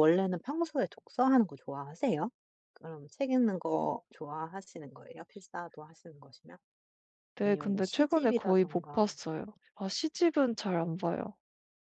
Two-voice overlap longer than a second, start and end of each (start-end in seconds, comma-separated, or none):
7.5-9.1